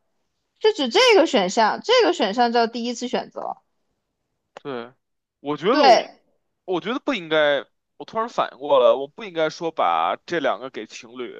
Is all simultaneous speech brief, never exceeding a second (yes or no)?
yes